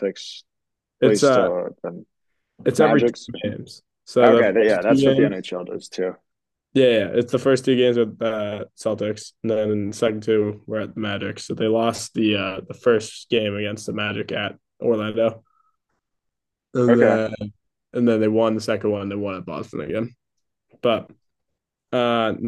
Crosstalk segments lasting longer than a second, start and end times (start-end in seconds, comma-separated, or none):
4.2-5.4